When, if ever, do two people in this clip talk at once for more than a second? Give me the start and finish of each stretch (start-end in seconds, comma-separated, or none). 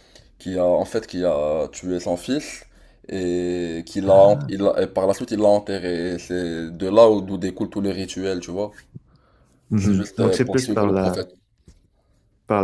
9.8-11.3